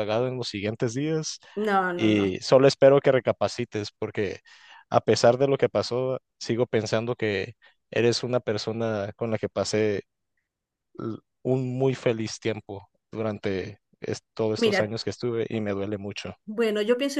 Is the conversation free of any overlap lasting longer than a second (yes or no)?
yes